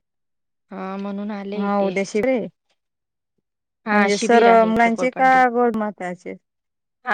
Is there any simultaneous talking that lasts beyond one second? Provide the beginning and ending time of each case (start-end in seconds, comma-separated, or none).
3.9-5.4